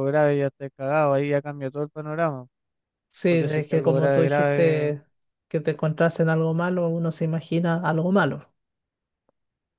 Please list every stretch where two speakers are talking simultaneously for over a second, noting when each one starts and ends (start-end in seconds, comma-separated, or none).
3.3-5.0